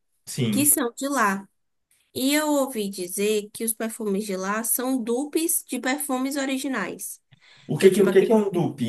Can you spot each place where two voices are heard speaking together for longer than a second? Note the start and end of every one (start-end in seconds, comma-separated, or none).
none